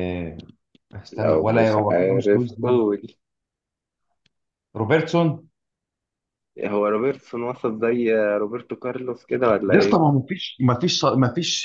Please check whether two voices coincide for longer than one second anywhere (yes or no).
yes